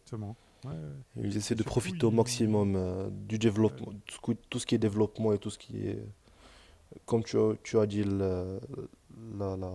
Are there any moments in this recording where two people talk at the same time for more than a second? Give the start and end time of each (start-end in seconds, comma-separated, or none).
1.5-2.7